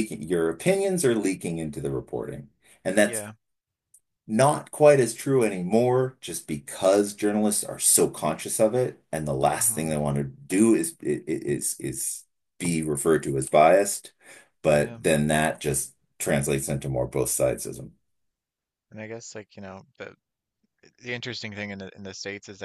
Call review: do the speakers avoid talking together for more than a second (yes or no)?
yes